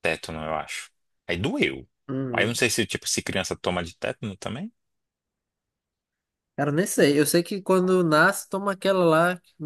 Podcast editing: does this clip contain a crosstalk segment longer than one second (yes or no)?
no